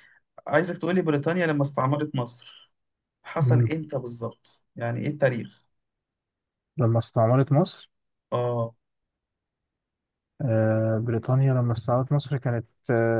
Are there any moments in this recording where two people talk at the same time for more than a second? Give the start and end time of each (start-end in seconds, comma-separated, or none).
none